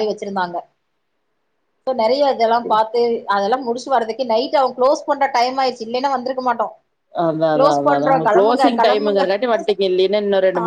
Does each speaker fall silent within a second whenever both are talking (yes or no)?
no